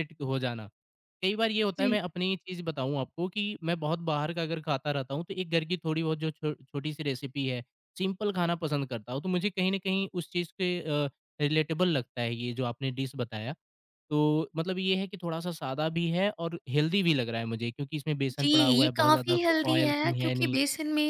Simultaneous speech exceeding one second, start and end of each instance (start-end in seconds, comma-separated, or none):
18.4-20.6